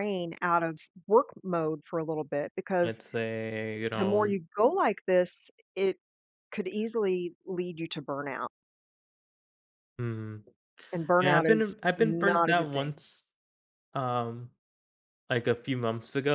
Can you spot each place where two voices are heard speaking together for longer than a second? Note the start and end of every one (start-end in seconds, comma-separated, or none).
11.2-12.9